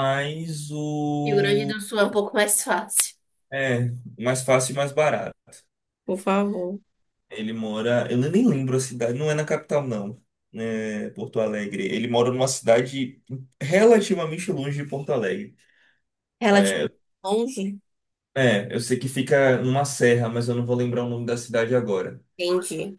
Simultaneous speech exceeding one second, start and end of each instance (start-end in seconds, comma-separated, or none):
none